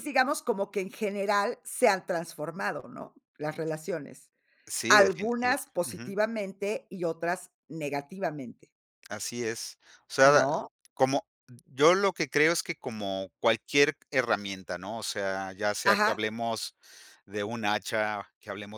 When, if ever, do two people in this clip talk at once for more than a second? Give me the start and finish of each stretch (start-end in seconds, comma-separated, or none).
4.9-6.2